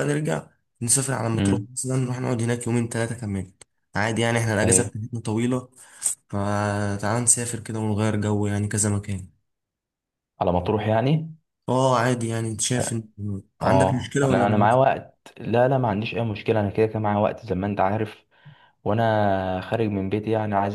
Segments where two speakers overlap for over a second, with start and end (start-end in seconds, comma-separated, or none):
13.6-14.8